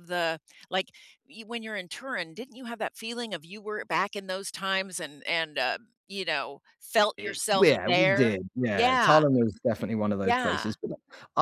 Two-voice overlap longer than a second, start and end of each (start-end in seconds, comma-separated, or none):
7.2-9.2